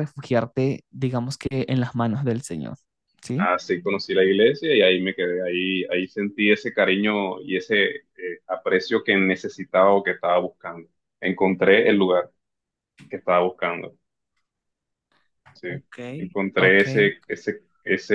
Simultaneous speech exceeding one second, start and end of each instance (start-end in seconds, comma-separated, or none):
none